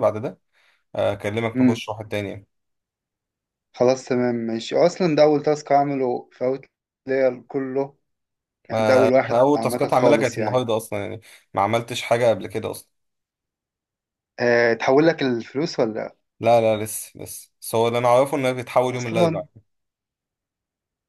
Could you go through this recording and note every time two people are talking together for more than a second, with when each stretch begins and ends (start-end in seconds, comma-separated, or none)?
8.7-10.6